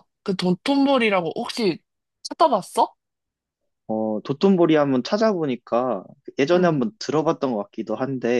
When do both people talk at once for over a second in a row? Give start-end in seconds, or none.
none